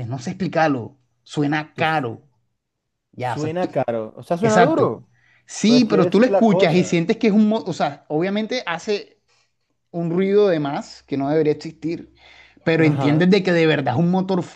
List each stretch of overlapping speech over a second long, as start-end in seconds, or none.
5.7-7.0